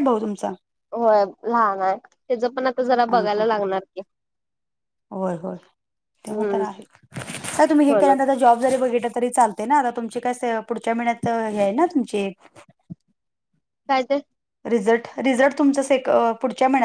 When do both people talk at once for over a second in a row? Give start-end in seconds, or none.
none